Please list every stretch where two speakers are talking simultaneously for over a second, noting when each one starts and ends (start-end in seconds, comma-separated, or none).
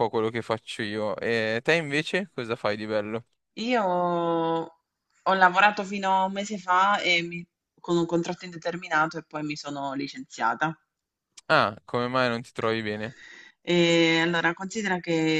none